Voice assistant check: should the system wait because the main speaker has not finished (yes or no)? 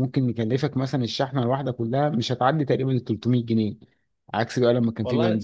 yes